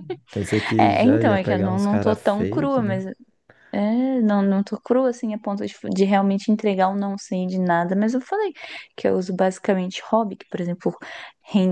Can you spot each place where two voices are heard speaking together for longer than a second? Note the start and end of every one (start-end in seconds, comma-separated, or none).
0.8-3.0